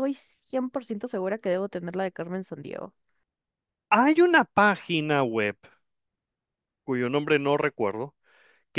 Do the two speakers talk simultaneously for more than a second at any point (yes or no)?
no